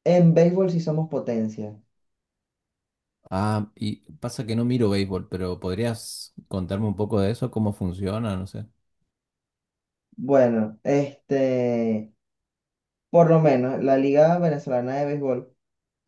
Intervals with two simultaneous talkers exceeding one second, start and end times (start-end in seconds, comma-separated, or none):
none